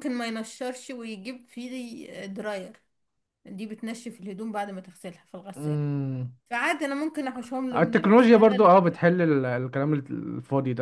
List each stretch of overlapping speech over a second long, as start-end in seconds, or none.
7.8-9.0